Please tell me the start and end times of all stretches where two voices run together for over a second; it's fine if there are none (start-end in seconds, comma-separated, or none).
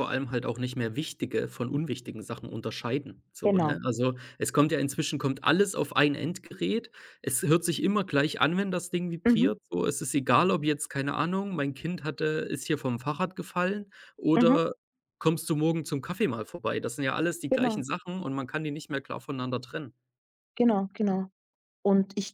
none